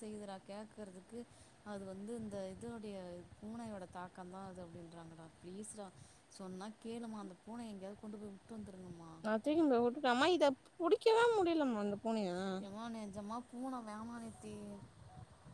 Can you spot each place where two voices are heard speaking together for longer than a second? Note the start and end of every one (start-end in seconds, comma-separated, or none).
none